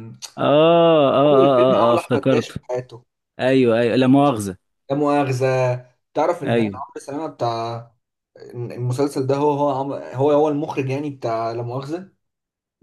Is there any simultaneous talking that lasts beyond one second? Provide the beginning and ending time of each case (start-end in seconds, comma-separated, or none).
1.3-2.6